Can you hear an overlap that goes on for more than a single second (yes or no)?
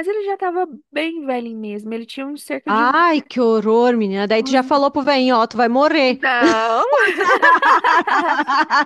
no